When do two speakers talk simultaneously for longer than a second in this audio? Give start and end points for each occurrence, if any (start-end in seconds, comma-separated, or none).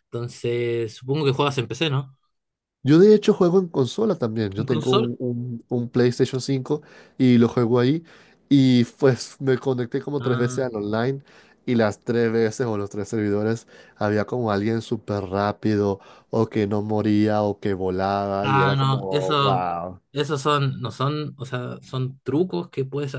18.4-19.7